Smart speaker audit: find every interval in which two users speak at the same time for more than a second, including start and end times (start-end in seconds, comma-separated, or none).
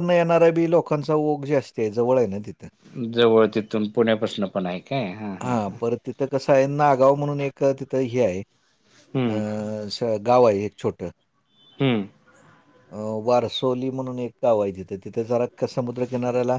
none